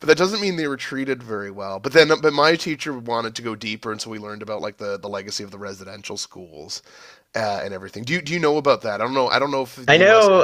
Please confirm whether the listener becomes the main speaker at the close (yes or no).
yes